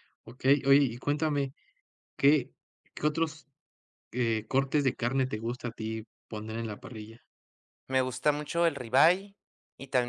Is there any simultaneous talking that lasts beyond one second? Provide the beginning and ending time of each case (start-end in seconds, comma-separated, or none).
none